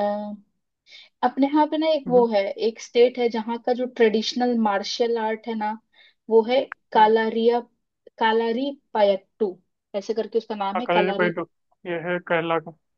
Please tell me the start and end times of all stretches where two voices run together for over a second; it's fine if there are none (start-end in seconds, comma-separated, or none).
none